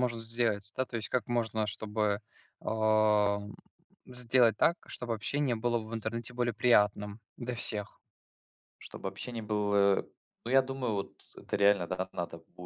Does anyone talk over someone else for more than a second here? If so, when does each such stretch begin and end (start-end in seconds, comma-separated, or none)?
none